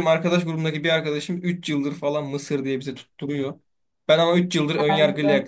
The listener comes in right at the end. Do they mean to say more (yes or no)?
no